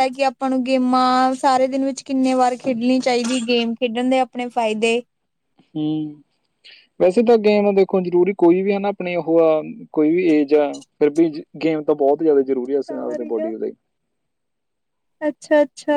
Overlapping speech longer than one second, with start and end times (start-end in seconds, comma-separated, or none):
none